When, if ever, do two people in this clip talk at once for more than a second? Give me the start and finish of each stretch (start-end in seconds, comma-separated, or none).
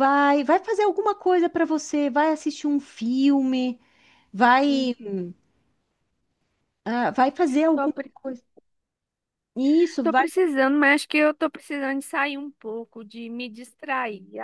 none